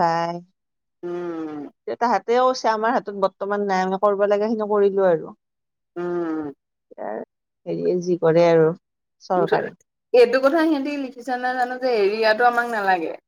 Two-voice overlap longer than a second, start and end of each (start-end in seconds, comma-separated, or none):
none